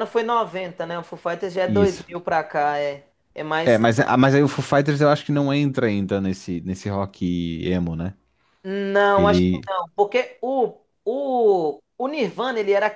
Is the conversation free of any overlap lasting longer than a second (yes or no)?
yes